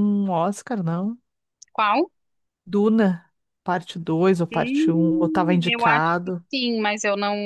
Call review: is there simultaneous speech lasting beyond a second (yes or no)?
yes